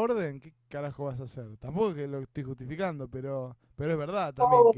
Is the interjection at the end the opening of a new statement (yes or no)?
yes